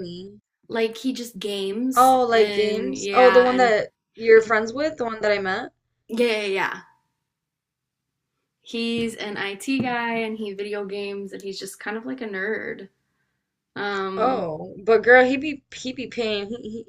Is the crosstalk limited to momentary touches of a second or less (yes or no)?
no